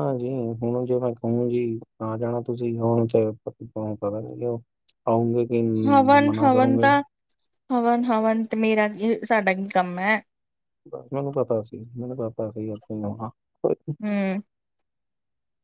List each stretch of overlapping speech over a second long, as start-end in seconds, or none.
none